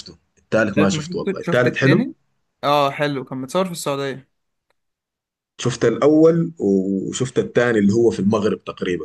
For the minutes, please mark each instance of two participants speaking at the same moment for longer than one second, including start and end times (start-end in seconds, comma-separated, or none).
0.6-2.0